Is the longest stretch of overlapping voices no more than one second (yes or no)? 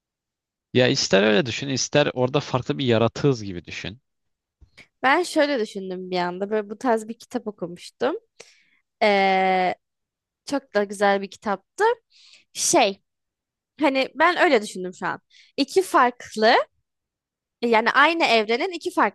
yes